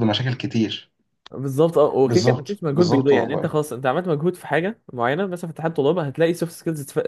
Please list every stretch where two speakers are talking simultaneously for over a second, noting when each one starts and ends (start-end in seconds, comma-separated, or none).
2.1-3.5